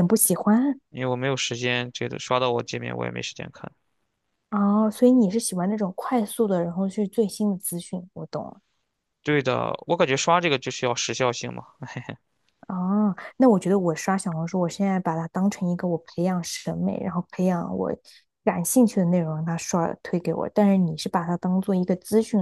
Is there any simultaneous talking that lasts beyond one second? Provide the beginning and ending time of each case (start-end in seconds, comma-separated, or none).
none